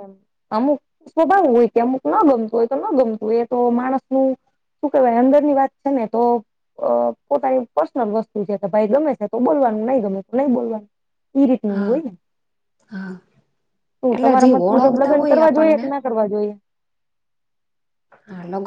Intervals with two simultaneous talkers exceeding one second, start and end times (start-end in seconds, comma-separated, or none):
14.2-15.8